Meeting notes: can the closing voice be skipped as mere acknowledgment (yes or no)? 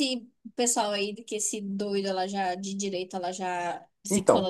no